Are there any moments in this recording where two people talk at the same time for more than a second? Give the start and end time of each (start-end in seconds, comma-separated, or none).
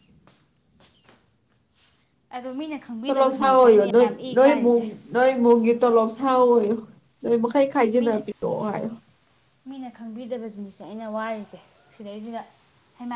3.0-4.8